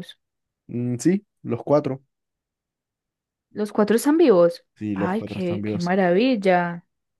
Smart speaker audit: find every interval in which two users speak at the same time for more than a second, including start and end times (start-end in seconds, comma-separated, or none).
4.8-6.0